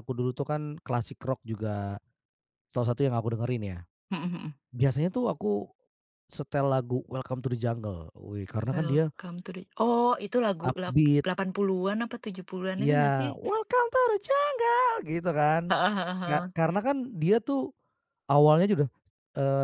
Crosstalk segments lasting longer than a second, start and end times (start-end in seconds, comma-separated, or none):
none